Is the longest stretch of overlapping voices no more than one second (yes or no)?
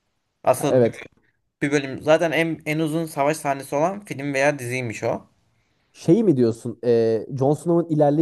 yes